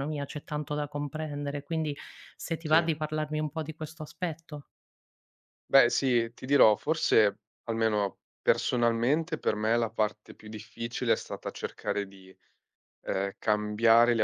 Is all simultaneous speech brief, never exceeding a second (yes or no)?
yes